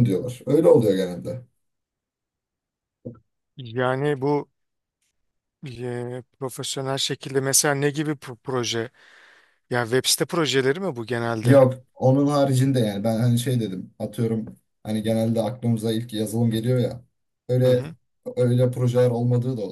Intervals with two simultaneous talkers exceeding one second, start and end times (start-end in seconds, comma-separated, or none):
none